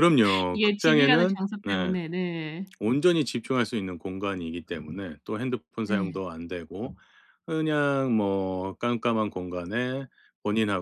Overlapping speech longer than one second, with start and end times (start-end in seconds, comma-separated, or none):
0.5-1.9